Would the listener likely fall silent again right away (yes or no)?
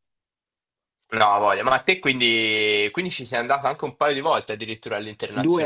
no